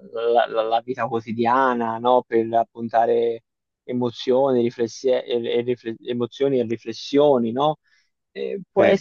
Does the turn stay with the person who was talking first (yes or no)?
yes